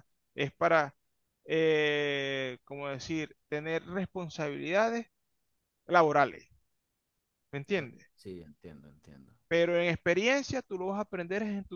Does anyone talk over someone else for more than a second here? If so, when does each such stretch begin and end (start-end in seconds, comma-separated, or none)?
none